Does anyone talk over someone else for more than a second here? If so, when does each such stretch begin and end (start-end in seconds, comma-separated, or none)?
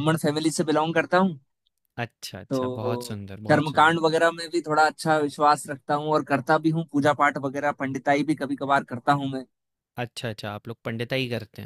2.5-4.0